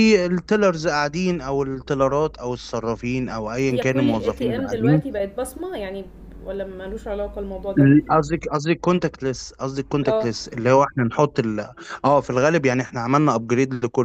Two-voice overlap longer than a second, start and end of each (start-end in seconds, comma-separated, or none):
3.7-5.0